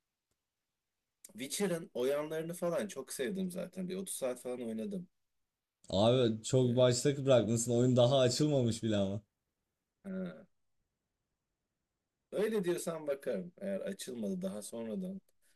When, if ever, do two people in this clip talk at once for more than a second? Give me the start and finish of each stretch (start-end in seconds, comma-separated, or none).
none